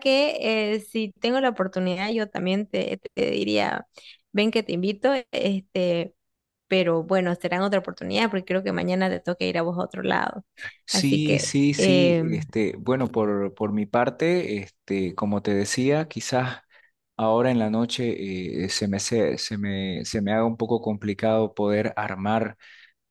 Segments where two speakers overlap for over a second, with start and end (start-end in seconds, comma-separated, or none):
10.9-12.5